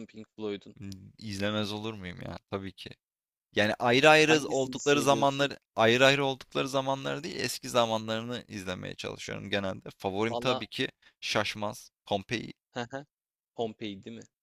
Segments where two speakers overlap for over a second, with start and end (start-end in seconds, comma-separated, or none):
4.3-5.5